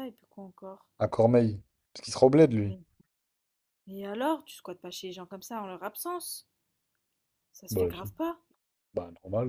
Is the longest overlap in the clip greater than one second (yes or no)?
no